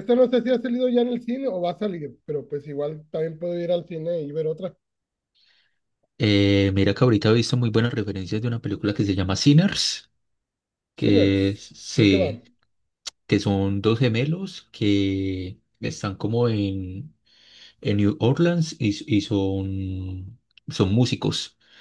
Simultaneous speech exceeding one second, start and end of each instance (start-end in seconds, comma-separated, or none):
10.9-12.3